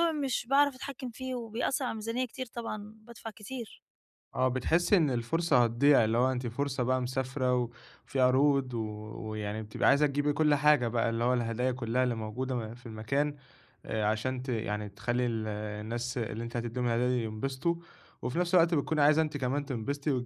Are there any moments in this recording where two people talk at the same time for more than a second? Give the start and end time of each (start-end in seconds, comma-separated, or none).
none